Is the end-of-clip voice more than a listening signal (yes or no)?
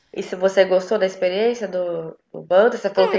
yes